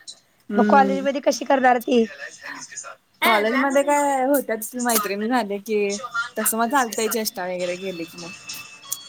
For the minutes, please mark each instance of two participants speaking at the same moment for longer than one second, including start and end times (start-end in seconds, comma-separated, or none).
none